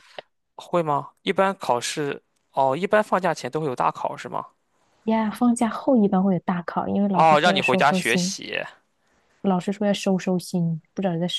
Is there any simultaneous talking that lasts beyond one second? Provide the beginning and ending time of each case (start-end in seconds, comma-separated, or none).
7.1-8.3